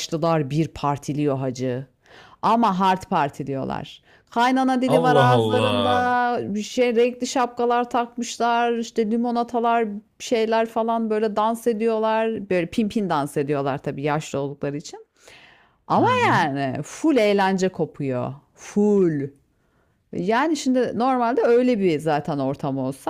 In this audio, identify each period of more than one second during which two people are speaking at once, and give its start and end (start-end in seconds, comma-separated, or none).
4.9-6.2